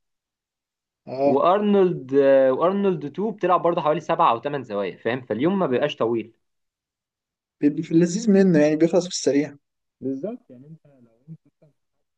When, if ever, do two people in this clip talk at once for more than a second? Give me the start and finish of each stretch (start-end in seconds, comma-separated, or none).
none